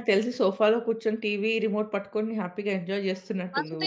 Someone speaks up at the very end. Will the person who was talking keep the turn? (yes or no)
no